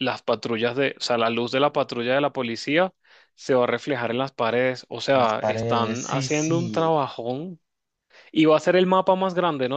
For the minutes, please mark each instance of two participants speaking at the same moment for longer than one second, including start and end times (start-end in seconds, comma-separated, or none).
5.1-6.9